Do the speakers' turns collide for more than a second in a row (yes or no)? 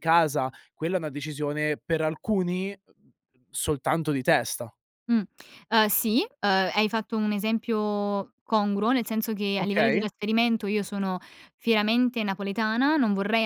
no